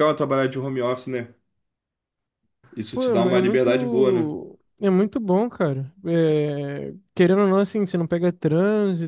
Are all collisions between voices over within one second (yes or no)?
no